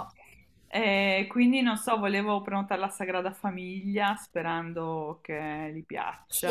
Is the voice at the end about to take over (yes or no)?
yes